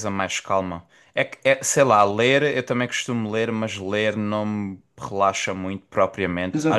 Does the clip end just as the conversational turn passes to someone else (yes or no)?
yes